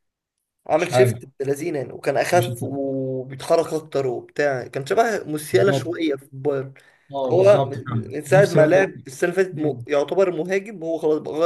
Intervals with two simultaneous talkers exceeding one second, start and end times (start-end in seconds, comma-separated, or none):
7.3-8.9